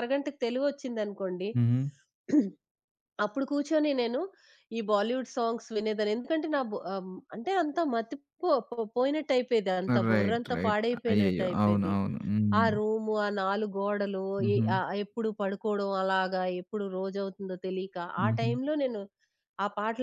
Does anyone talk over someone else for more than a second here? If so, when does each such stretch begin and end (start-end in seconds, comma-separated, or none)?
10.1-11.9